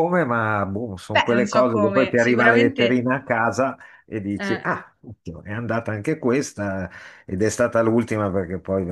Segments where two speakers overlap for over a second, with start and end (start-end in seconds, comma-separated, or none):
1.1-2.8